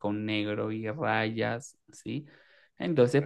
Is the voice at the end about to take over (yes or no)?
no